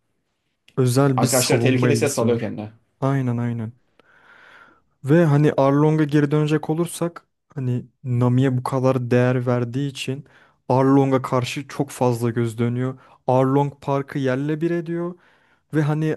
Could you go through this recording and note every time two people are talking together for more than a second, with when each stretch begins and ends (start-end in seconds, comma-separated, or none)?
1.1-2.5